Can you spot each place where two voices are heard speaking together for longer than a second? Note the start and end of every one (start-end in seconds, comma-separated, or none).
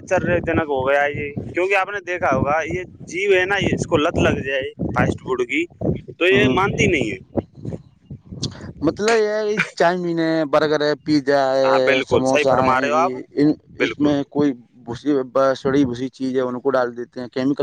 11.7-13.1